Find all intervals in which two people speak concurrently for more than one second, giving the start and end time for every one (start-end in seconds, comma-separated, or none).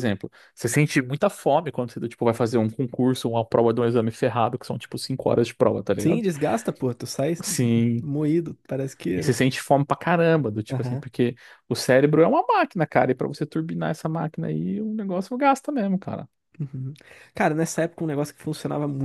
none